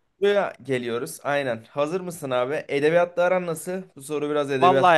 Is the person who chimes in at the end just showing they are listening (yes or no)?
no